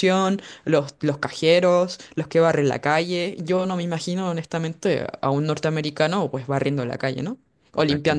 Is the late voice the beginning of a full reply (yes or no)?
yes